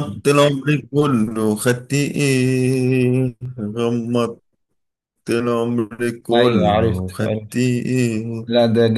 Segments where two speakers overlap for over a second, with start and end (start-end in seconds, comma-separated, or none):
6.3-7.7